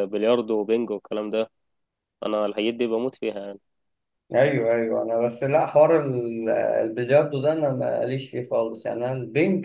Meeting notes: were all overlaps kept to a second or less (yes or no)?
yes